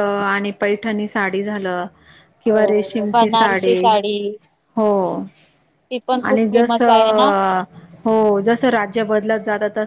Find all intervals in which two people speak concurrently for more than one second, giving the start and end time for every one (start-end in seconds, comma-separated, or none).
2.5-3.8